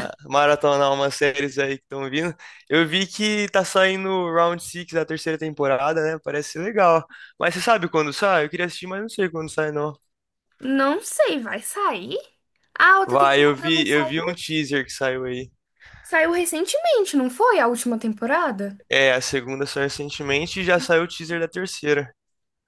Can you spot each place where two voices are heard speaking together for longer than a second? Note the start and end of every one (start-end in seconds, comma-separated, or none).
13.1-14.3